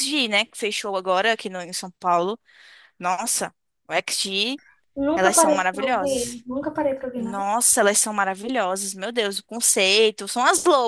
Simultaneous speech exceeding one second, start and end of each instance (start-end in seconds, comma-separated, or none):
5.1-6.4